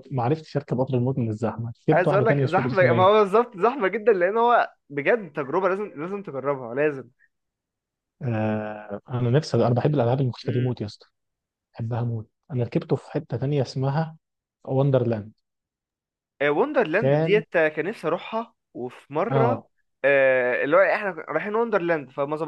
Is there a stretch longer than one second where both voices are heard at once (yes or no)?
yes